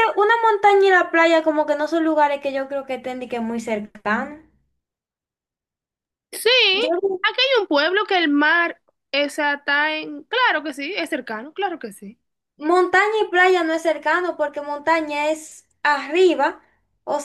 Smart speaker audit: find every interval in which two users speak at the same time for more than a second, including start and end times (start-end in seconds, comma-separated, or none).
none